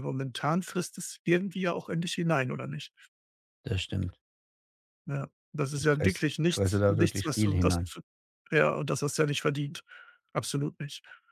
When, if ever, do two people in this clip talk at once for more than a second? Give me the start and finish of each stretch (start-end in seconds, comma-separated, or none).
5.8-7.9